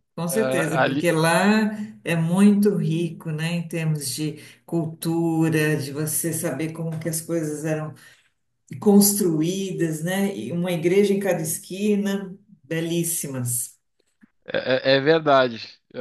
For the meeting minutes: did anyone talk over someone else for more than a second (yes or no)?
no